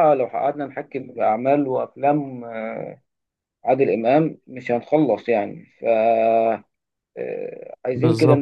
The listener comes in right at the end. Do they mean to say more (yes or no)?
no